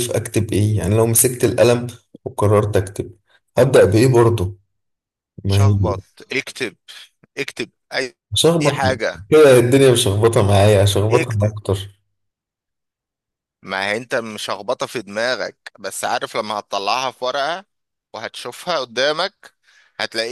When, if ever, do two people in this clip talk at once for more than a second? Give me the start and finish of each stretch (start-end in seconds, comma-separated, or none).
none